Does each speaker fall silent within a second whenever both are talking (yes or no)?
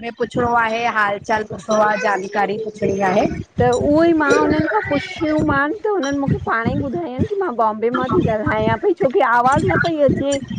yes